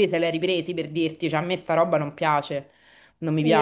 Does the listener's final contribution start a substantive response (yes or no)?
yes